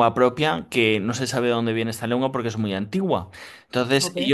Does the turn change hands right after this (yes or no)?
no